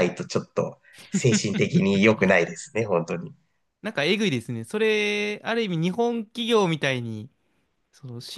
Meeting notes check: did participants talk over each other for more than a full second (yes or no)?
no